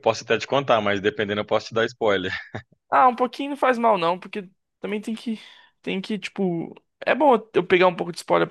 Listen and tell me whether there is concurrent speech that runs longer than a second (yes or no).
no